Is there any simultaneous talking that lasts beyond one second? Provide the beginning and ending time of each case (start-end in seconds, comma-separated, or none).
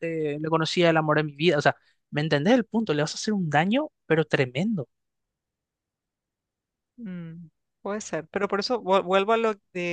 none